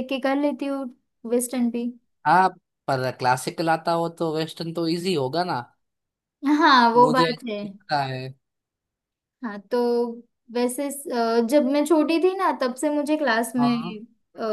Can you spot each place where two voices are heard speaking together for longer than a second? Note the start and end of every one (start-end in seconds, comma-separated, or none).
none